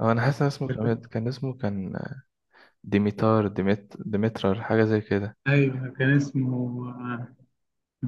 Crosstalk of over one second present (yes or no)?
no